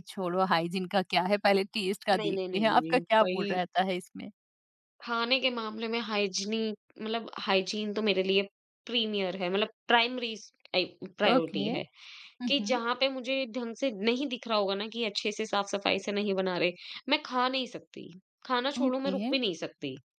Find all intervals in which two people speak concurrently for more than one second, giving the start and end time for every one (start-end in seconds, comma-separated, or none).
2.2-3.6